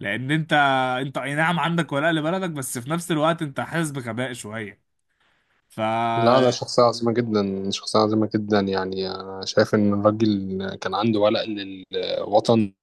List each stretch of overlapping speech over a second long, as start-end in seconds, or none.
none